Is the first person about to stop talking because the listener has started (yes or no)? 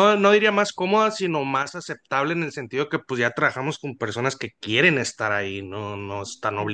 yes